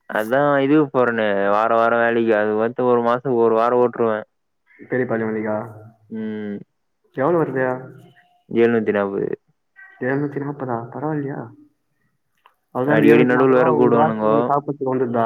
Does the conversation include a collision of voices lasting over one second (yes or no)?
yes